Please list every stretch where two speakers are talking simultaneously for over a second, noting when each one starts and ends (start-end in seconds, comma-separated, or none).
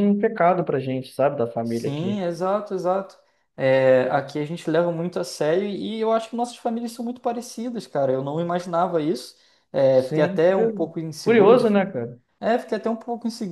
9.9-11.6